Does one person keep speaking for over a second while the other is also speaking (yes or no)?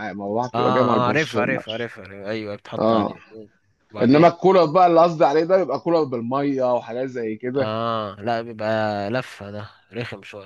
yes